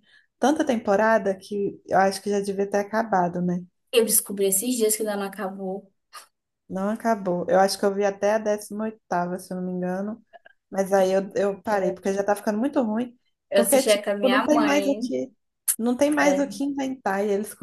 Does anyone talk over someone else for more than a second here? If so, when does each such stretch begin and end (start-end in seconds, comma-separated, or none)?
13.5-15.1